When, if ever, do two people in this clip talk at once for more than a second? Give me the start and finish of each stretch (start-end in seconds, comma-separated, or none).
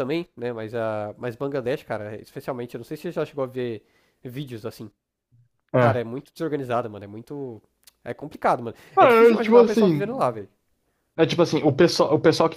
8.9-10.3